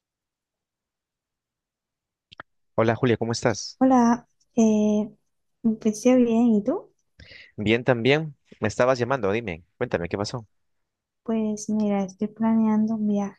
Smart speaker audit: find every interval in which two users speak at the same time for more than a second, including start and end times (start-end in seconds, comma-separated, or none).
none